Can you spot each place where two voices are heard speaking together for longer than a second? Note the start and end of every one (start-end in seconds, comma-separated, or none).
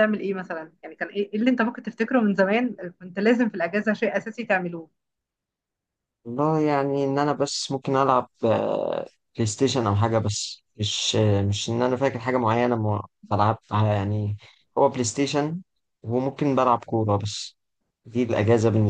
none